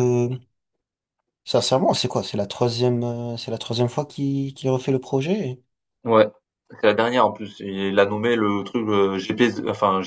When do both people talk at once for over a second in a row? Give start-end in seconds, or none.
none